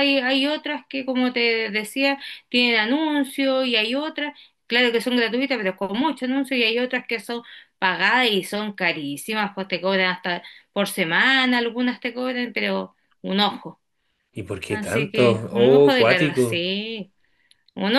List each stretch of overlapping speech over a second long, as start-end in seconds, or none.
14.7-16.6